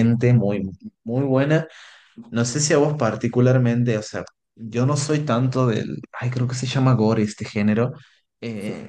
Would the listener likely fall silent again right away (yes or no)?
yes